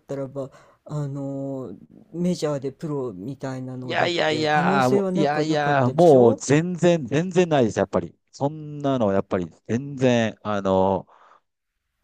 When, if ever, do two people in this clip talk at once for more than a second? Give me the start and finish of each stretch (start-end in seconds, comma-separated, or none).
3.8-6.4